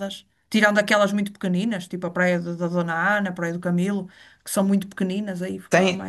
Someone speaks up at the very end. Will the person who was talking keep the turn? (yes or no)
no